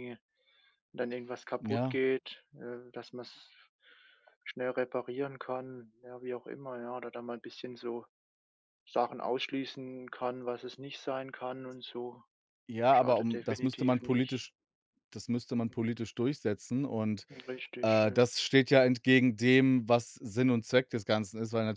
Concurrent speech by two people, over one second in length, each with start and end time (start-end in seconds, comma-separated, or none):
12.9-14.4